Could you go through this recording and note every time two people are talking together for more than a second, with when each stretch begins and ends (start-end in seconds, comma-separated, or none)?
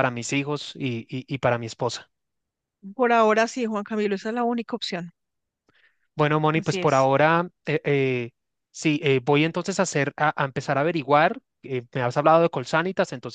none